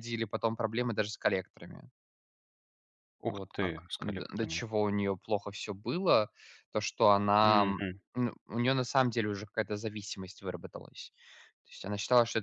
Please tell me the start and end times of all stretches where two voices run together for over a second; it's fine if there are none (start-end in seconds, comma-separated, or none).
3.3-4.6